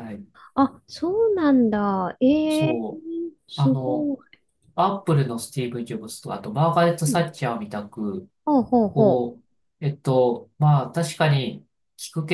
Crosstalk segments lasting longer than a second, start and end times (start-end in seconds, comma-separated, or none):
none